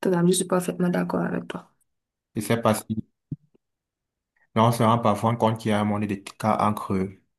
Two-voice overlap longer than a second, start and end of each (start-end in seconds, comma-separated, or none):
none